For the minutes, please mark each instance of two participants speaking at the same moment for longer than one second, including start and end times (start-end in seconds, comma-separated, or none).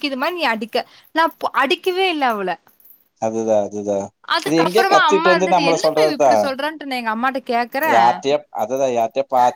4.5-6.3